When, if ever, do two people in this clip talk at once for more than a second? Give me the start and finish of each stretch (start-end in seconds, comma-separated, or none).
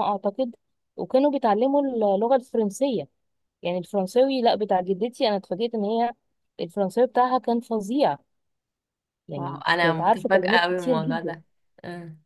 9.3-11.4